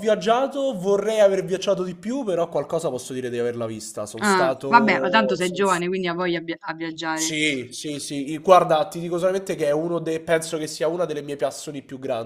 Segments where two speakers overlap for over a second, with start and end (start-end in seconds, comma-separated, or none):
4.2-5.6